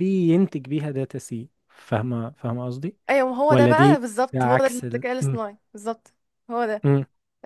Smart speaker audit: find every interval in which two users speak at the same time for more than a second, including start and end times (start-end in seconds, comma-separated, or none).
3.5-5.4